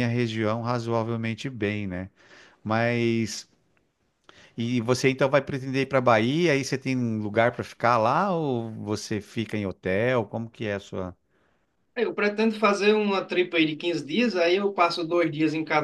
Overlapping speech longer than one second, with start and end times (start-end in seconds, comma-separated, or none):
none